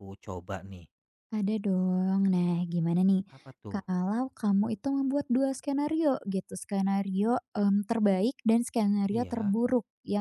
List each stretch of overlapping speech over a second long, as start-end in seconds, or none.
none